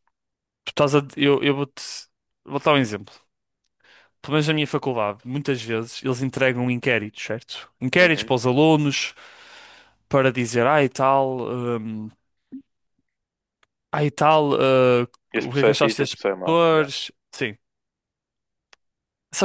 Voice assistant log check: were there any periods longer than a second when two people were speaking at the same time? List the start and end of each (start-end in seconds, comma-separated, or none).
15.4-16.9